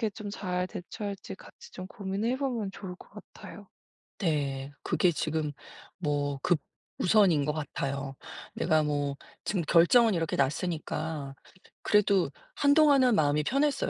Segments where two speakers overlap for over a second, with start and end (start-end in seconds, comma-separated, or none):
none